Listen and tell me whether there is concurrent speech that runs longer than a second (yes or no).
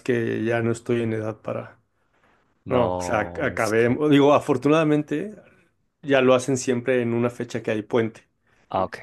yes